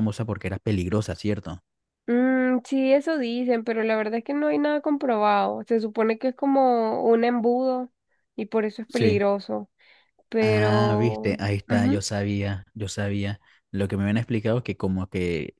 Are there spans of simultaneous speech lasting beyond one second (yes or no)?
yes